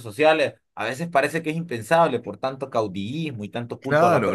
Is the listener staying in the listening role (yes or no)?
no